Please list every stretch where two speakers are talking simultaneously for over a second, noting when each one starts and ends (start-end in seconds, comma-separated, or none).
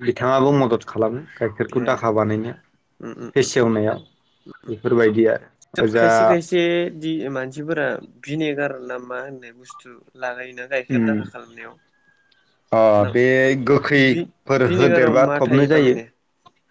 14.0-15.9